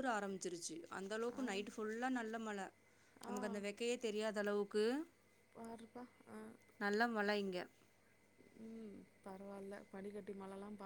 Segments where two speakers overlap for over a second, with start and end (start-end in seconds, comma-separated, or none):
none